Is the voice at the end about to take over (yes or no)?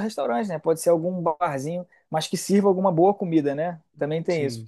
no